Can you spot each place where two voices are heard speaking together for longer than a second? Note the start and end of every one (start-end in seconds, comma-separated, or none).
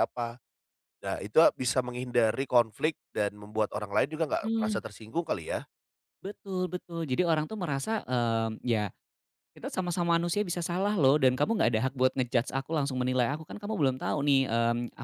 none